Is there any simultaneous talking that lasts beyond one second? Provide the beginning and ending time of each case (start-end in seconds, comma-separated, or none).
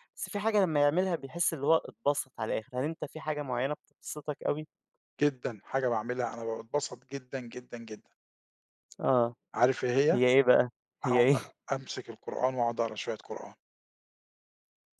none